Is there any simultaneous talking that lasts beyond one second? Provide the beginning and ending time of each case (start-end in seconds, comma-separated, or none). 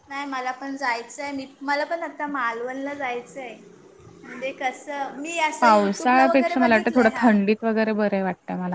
5.6-7.3